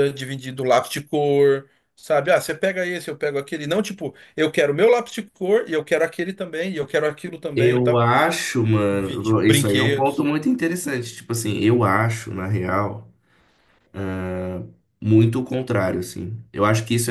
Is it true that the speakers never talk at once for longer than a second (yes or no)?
no